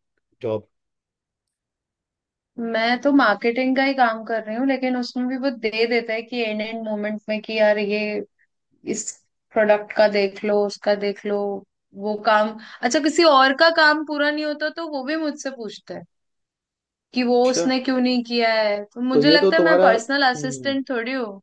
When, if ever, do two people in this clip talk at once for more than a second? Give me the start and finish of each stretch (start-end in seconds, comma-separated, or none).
19.1-20.7